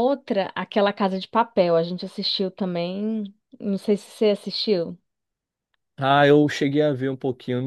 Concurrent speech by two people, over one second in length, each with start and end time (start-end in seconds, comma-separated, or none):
none